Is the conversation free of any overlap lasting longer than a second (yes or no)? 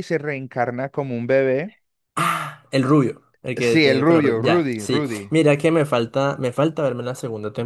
no